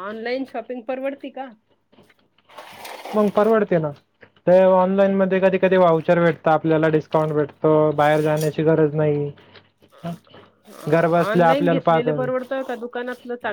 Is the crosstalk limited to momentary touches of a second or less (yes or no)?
no